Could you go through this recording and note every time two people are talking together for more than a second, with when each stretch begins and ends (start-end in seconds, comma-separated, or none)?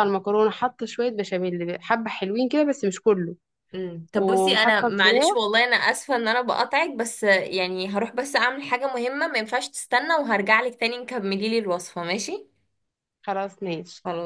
4.1-5.4